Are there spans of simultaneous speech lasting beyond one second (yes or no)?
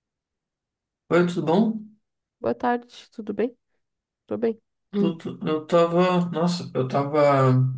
no